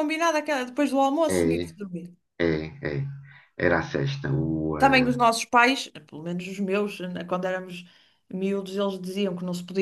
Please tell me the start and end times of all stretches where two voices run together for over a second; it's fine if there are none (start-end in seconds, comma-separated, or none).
none